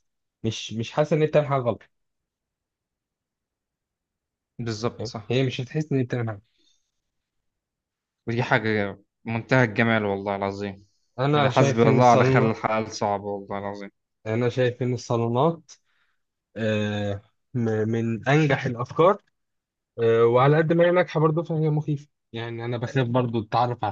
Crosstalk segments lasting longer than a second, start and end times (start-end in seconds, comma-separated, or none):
11.3-12.6